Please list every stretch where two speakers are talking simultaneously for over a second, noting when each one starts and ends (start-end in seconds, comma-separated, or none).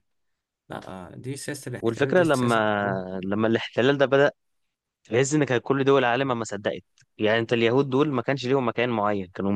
1.8-3.1